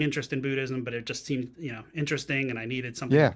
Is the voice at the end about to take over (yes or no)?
no